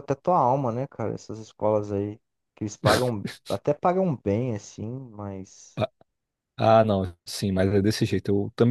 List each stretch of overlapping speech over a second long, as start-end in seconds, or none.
none